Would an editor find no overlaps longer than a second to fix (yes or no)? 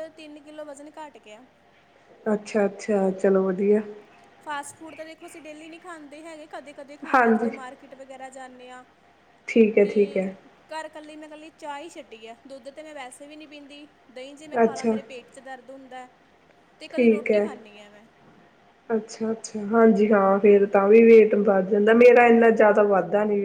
yes